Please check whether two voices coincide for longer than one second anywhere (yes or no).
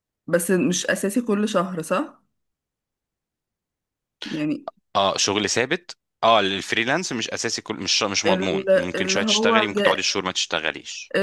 yes